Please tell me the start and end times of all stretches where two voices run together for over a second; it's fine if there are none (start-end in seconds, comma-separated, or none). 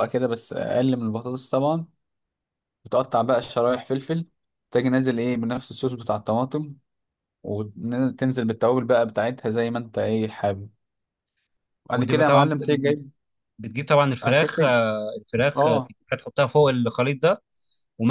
none